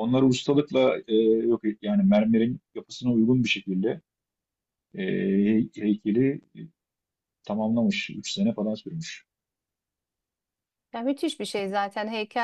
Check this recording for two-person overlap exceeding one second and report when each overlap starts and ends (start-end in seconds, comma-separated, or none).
none